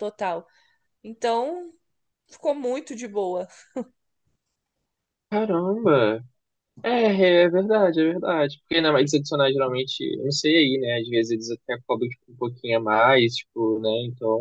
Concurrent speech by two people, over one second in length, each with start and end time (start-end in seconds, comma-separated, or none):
none